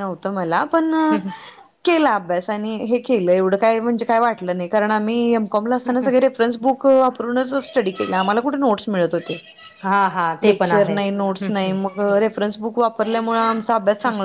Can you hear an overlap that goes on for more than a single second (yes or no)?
yes